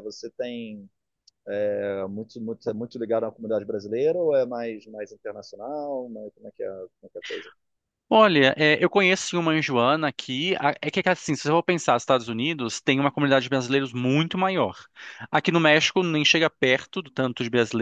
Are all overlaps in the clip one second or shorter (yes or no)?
yes